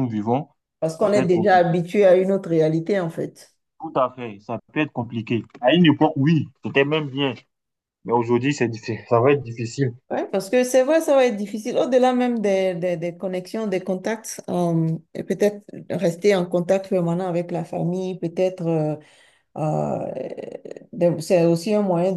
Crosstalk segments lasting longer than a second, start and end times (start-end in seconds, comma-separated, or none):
none